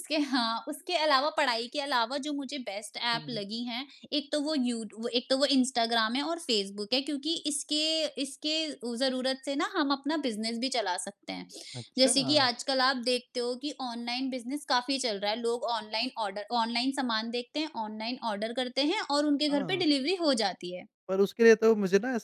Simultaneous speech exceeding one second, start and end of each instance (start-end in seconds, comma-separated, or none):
none